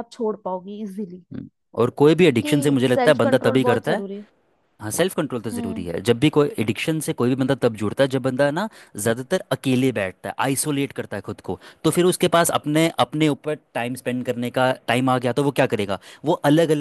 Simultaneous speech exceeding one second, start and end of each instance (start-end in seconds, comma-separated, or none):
2.3-4.0